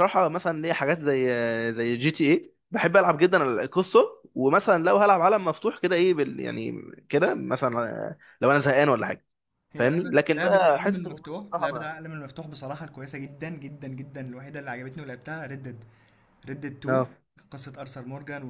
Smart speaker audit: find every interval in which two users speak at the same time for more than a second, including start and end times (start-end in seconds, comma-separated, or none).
9.8-11.9